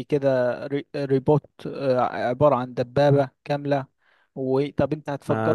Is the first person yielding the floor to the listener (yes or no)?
yes